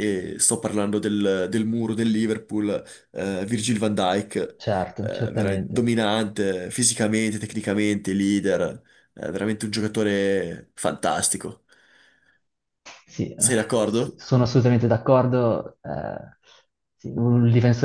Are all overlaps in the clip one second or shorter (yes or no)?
yes